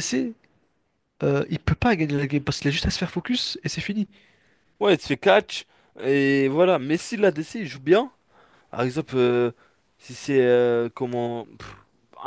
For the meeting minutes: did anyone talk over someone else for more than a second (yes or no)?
no